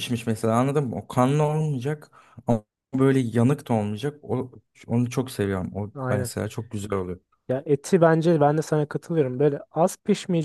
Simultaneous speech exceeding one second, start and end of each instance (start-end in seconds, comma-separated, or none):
none